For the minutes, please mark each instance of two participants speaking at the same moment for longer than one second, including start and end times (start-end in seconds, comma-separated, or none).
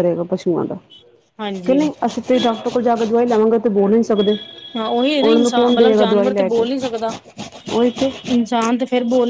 5.2-6.6